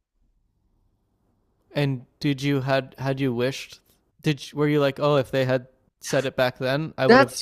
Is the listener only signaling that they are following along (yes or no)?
no